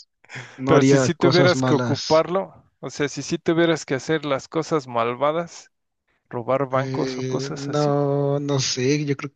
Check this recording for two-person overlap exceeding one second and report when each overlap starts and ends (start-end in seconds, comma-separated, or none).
0.7-2.2, 6.7-8.0